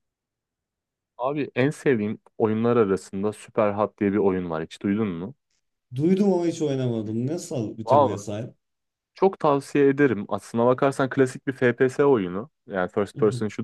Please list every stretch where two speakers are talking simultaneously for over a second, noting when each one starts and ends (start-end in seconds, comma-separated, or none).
none